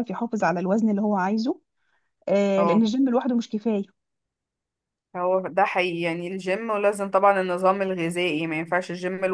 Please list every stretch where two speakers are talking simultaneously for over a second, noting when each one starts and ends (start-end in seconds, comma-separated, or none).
none